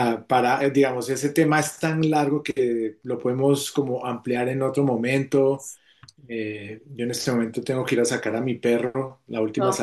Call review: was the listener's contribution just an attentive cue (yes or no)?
no